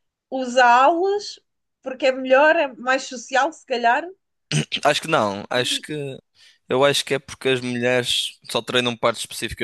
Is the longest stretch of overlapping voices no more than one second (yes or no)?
yes